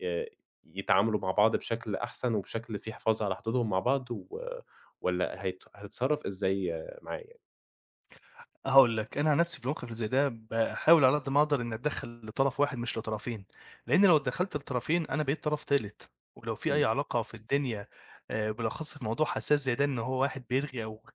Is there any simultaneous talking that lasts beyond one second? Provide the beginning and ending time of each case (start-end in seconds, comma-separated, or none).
none